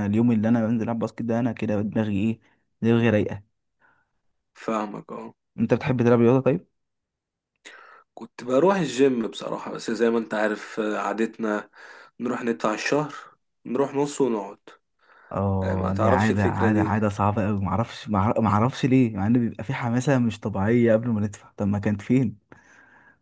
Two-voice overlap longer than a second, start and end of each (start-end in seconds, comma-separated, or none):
15.6-16.9